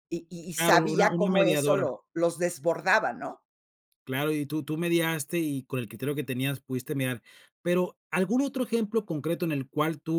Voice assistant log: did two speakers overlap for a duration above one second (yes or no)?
yes